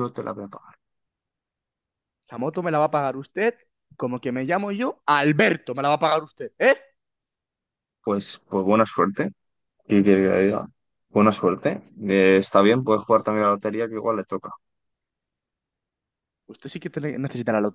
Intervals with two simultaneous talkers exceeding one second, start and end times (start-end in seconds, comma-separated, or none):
none